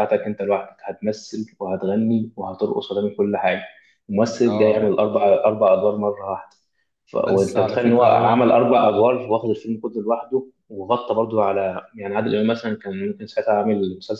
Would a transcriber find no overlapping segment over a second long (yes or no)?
no